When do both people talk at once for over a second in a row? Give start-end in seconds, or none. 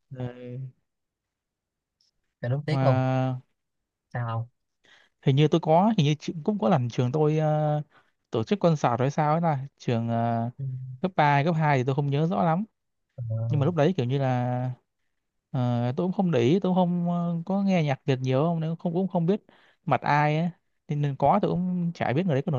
none